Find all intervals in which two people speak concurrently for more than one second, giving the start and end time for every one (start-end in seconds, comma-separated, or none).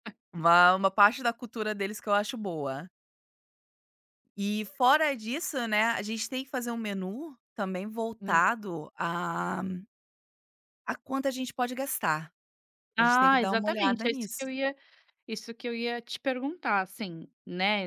13.0-14.4